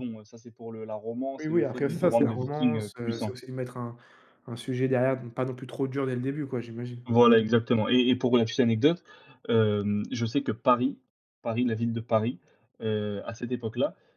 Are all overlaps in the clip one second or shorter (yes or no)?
no